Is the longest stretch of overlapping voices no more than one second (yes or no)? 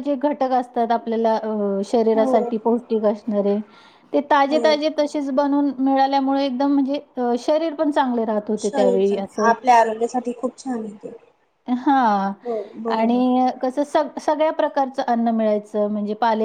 yes